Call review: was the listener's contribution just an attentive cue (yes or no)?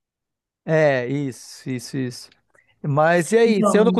yes